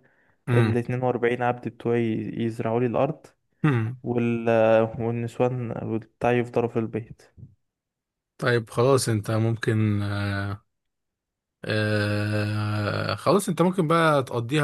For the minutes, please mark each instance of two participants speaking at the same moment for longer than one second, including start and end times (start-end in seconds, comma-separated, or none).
none